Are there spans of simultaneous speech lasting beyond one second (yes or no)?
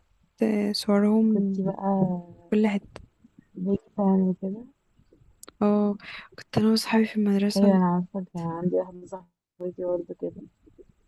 no